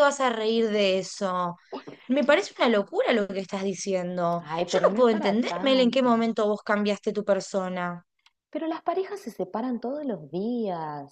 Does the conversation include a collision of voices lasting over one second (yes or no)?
yes